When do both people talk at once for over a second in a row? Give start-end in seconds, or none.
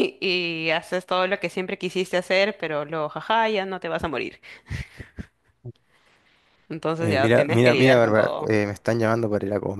7.0-8.5